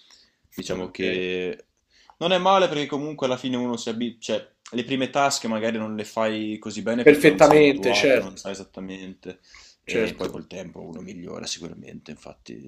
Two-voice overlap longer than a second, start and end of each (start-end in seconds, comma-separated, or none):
7.0-8.4